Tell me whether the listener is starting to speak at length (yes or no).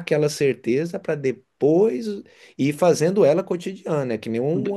yes